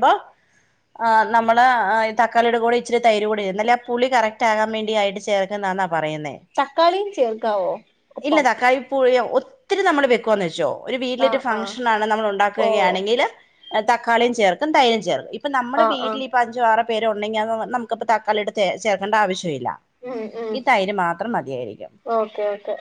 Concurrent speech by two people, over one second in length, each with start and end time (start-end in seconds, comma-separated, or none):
none